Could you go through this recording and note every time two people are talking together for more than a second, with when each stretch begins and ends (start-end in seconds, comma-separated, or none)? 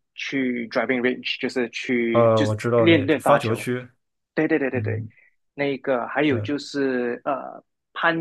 2.1-3.6